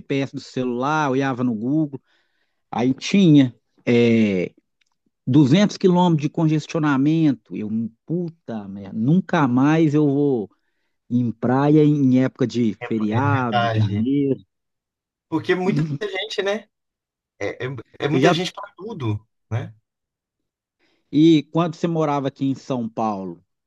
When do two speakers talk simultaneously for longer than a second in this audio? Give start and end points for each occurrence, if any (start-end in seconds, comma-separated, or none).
12.8-14.1